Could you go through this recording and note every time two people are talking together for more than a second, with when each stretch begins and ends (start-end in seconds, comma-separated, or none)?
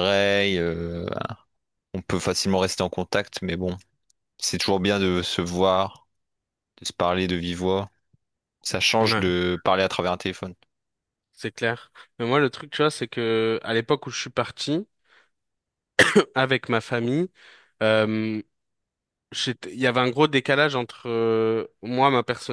none